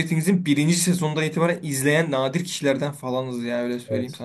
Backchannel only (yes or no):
no